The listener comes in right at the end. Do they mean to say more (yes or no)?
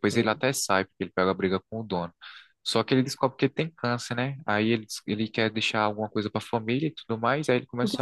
yes